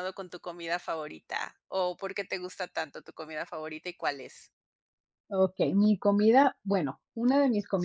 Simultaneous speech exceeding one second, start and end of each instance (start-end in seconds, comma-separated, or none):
none